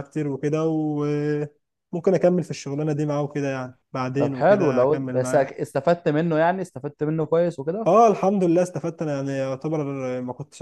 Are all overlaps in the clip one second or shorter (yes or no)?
no